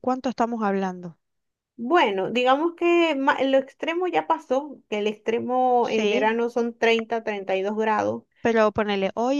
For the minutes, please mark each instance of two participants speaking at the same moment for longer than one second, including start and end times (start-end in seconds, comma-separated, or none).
none